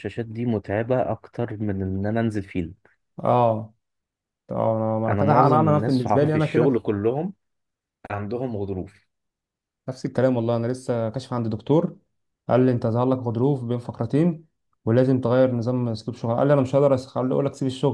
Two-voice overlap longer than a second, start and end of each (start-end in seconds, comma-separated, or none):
5.1-6.8